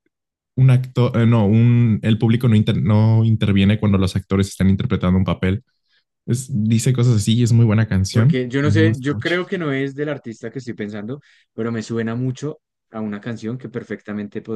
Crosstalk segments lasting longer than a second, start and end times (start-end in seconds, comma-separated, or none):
8.1-9.4